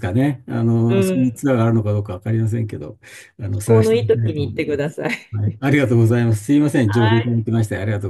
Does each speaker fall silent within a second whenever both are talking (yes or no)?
no